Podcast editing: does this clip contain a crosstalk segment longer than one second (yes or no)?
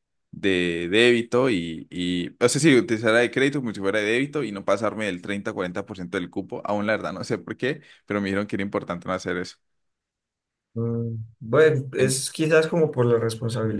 no